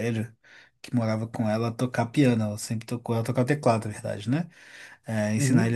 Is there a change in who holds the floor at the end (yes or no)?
no